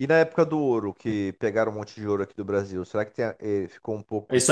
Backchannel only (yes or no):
no